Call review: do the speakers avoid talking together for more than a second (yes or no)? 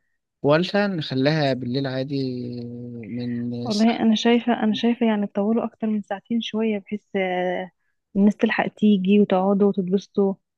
yes